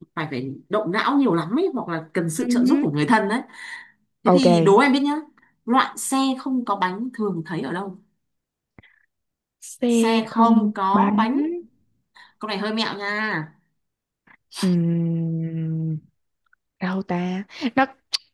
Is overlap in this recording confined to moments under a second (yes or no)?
no